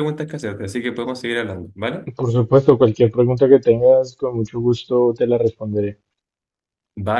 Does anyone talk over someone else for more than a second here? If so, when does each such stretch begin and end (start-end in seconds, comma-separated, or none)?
none